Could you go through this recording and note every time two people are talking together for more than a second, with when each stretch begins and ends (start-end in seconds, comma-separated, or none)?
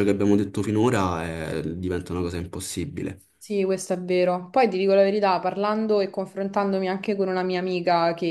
none